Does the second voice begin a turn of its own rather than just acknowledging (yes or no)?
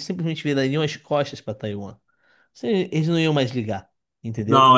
yes